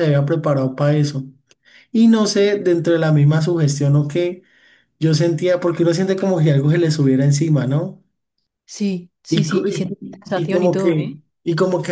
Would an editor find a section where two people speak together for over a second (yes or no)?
yes